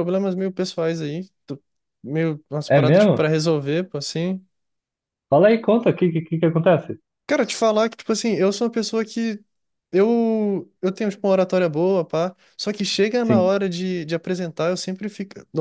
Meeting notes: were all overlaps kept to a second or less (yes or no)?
yes